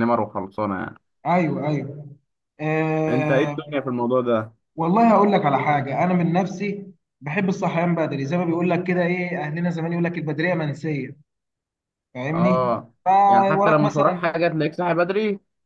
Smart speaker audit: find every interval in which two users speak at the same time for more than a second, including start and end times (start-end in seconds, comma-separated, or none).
12.3-14.3